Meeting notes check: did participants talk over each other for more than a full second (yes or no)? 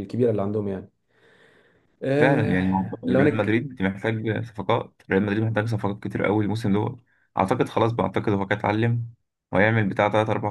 yes